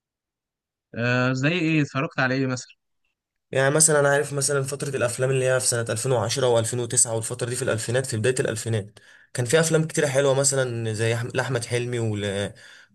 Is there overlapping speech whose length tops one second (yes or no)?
no